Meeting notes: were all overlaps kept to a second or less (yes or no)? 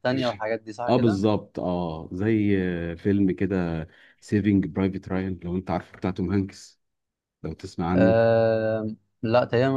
yes